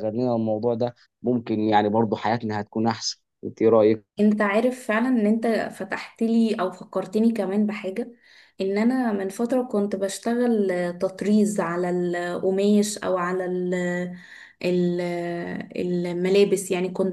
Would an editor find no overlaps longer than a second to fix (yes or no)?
yes